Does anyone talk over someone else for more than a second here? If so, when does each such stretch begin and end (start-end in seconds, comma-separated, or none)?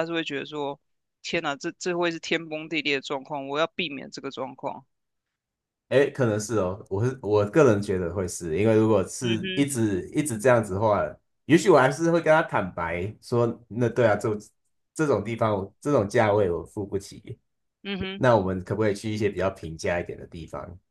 none